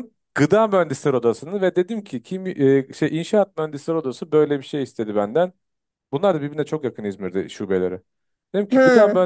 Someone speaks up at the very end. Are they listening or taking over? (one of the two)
listening